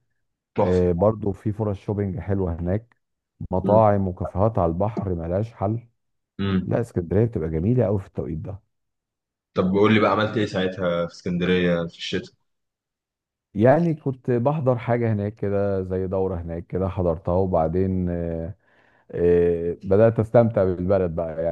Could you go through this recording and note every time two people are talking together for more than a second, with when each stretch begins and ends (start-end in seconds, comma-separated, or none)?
none